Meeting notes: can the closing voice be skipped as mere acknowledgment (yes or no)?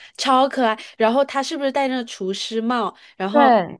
yes